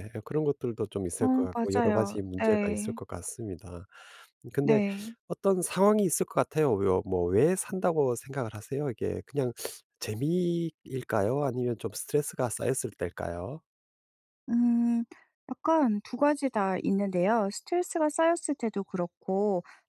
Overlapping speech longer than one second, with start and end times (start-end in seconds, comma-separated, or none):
1.2-3.0